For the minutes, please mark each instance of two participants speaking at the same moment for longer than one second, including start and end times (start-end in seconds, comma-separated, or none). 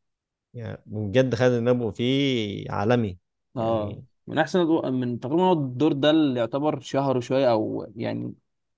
none